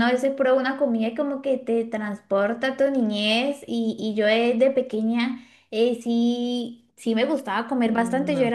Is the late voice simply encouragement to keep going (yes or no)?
yes